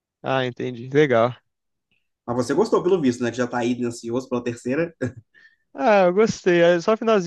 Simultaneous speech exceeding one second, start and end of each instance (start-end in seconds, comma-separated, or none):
none